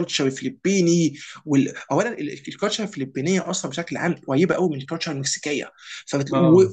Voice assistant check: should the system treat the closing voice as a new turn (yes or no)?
no